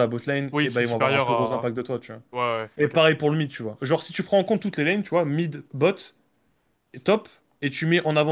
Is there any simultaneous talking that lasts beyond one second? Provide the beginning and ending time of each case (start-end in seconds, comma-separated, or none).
0.5-1.7